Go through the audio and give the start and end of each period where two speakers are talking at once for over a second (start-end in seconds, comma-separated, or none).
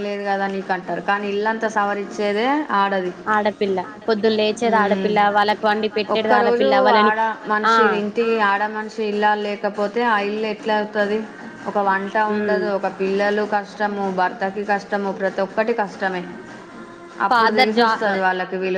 4.7-6.7